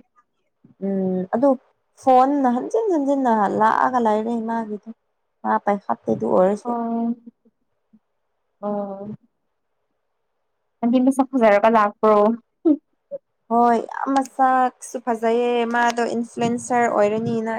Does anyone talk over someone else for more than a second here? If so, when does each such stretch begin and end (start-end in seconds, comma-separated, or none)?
none